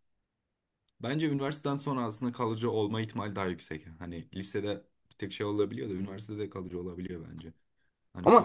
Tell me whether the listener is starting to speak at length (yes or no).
yes